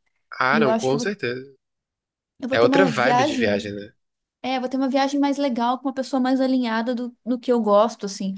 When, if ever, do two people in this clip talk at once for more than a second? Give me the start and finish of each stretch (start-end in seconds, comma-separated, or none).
2.5-3.7